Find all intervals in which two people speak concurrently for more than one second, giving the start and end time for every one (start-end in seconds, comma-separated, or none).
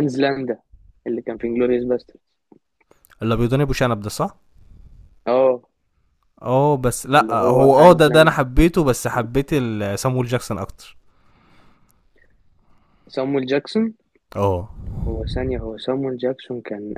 7.1-8.3